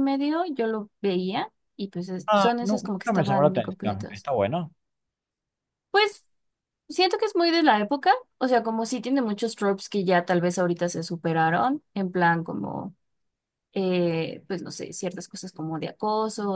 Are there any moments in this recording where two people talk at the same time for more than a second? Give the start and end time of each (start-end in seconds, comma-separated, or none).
2.3-4.3